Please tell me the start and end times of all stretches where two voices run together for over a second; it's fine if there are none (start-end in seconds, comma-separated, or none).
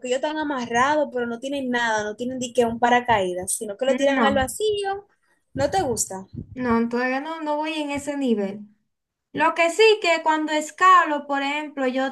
none